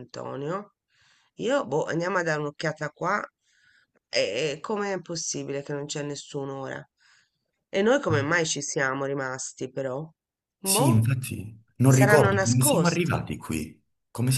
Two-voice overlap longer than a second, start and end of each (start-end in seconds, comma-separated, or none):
11.8-13.2